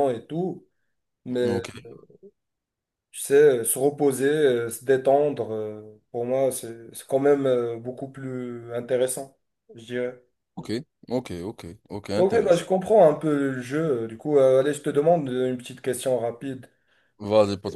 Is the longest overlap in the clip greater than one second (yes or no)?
no